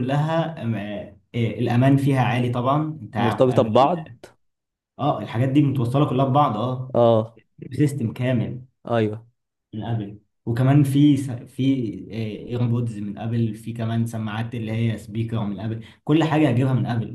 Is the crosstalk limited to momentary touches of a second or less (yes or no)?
yes